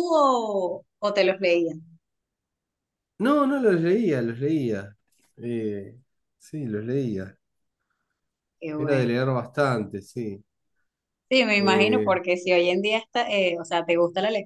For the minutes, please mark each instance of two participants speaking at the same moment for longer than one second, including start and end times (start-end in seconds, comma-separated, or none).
none